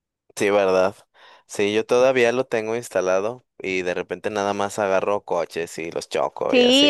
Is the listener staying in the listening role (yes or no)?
no